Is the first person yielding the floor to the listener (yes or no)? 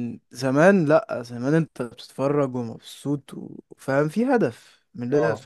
no